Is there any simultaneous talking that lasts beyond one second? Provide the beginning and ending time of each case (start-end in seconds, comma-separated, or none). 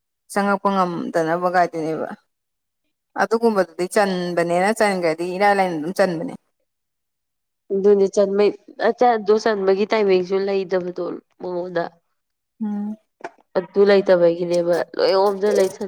none